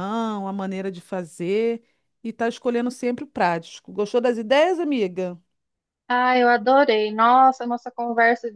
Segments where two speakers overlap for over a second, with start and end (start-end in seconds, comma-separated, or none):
none